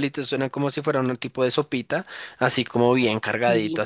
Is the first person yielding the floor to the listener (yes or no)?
no